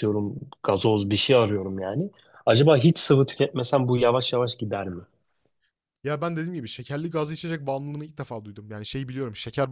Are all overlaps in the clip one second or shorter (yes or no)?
yes